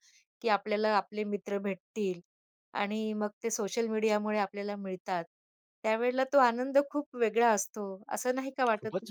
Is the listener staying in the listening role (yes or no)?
no